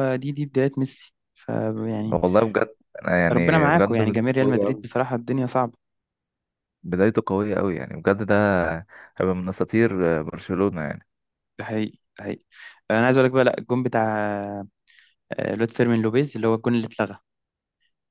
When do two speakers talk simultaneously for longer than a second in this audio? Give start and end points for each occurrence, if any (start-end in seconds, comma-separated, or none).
3.3-4.8